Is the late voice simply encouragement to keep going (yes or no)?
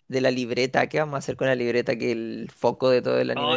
no